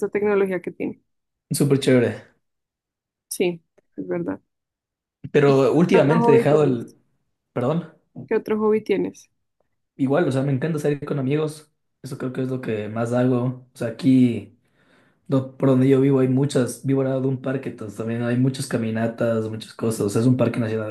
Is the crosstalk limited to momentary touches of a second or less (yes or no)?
no